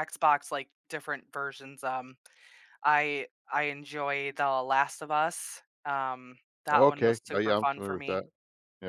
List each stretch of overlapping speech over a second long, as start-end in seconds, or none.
6.7-8.2